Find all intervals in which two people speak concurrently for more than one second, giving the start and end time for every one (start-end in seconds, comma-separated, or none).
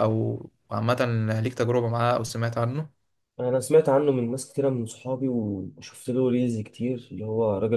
none